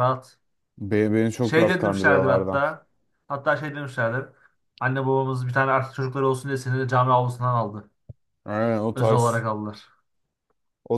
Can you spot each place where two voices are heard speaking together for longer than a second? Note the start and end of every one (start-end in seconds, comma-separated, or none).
1.4-2.6